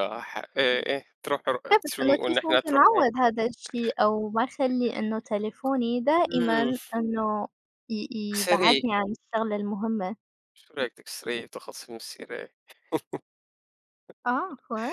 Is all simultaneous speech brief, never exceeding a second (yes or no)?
no